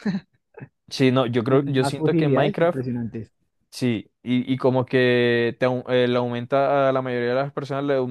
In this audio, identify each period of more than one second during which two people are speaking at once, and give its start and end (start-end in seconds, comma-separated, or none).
1.5-2.8